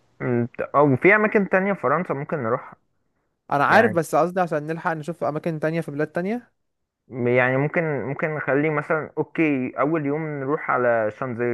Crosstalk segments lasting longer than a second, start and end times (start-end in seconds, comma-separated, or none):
none